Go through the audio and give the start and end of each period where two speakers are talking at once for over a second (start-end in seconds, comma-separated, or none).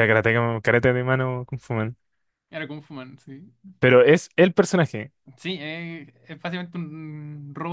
none